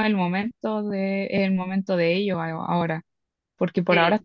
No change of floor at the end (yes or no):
yes